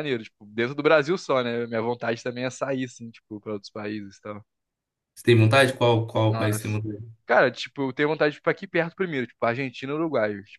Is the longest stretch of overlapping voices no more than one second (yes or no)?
yes